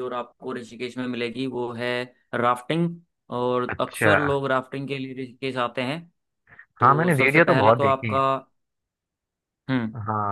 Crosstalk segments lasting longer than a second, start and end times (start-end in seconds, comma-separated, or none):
6.8-8.2